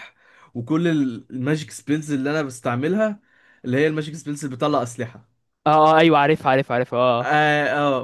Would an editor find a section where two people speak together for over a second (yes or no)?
no